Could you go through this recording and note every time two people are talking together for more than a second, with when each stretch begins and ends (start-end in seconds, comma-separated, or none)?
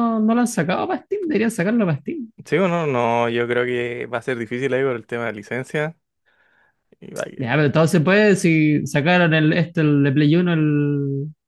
none